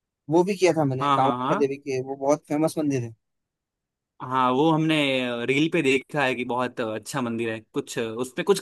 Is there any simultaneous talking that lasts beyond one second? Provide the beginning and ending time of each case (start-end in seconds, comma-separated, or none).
none